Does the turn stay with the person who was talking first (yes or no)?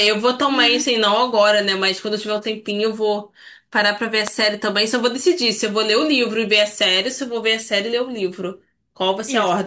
yes